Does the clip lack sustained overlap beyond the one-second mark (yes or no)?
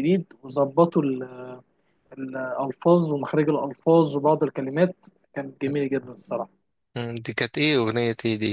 yes